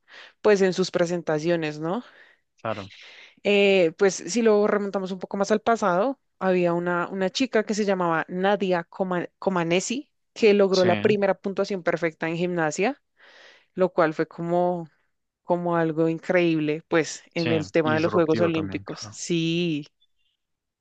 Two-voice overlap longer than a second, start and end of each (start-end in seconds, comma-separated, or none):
17.4-19.1